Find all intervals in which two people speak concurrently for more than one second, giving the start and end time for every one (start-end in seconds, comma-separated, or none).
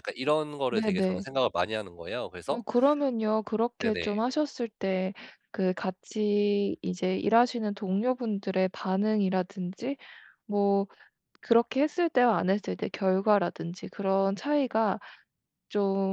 none